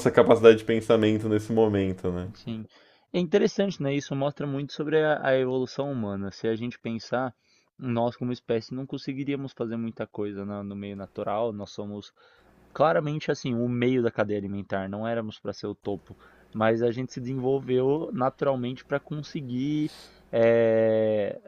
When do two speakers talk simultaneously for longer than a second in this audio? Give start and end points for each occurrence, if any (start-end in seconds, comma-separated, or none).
none